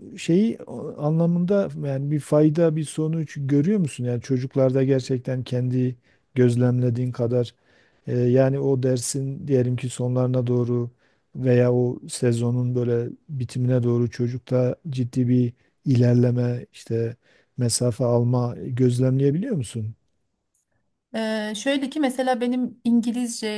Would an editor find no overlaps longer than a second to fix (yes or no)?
yes